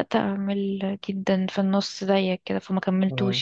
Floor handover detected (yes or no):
yes